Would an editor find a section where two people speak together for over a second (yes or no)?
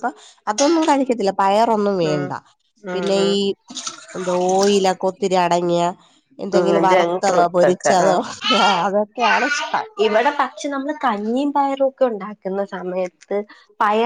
yes